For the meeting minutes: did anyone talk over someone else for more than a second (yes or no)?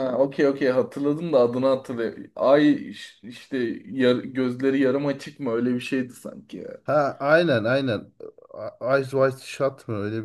no